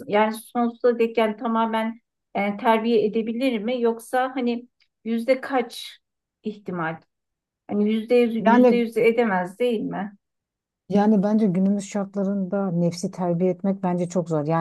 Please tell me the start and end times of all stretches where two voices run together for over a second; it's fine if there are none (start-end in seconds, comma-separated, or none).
none